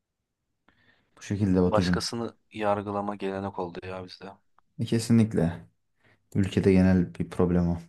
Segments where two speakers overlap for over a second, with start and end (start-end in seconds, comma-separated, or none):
none